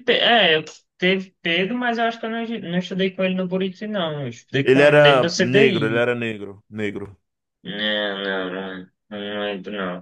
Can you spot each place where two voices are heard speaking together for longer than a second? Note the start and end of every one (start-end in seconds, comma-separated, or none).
4.6-6.1